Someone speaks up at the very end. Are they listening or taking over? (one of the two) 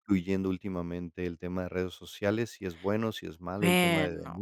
listening